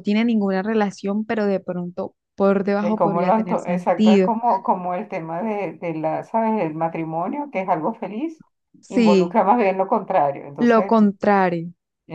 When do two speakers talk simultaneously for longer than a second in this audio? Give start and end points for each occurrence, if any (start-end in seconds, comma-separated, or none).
2.8-4.3